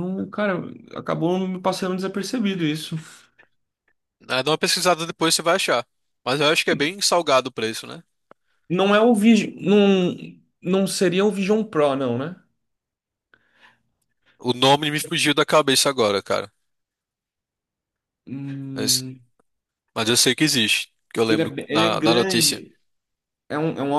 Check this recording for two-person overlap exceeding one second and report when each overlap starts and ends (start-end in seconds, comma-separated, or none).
21.2-22.6